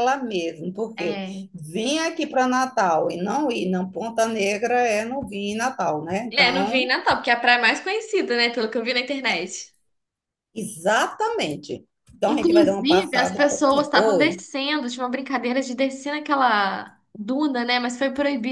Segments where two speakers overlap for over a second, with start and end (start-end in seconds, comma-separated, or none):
12.2-14.4